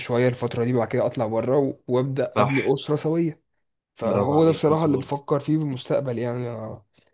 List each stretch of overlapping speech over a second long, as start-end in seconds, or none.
4.0-5.2